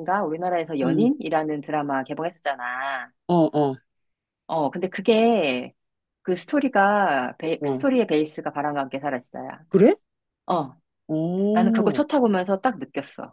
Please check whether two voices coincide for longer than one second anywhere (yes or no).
no